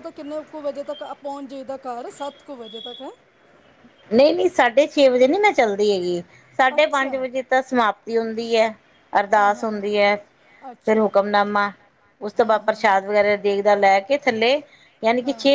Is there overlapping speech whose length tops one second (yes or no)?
no